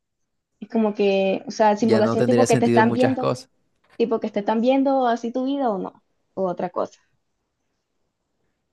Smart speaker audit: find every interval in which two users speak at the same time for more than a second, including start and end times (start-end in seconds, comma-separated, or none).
1.8-3.3